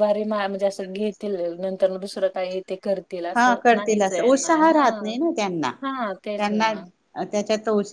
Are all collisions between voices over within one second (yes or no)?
no